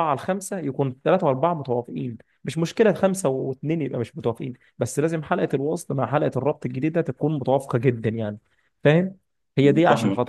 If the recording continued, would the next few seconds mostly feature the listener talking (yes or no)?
no